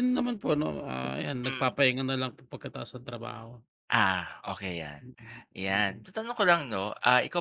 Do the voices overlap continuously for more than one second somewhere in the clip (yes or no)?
no